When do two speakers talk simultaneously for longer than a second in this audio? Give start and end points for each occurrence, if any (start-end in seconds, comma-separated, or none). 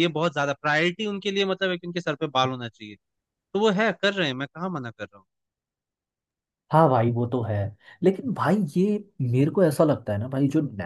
none